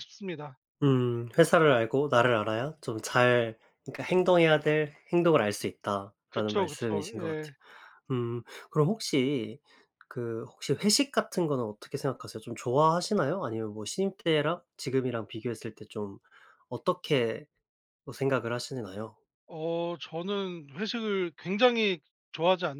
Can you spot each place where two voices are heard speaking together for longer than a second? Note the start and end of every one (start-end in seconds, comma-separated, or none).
6.3-7.5